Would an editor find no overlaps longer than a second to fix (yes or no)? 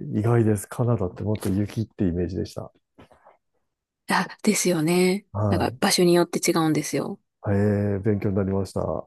yes